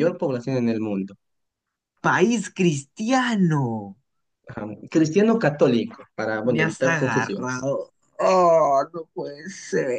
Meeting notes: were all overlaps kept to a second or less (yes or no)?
no